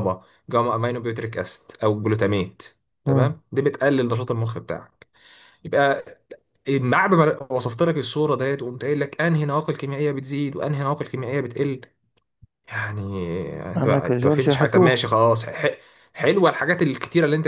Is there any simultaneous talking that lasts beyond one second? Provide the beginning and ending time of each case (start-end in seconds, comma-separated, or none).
13.8-15.1